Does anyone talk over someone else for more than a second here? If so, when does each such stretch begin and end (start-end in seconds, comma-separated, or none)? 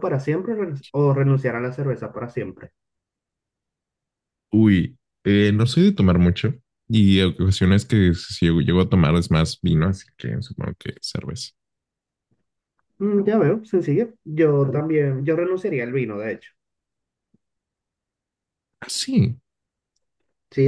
none